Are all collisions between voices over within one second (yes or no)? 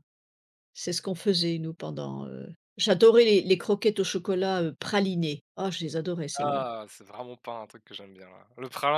yes